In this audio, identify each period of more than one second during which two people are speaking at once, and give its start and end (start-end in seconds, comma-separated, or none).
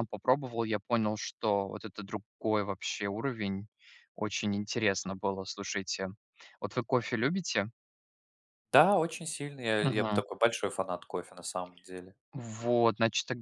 none